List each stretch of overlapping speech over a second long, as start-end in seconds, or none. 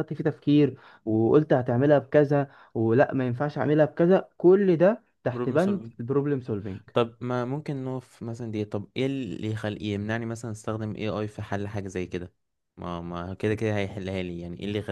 none